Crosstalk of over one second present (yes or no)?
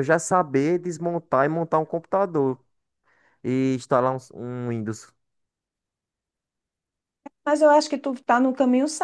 no